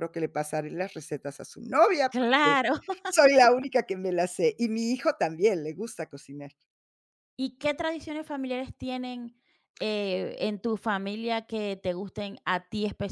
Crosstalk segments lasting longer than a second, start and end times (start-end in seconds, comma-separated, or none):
none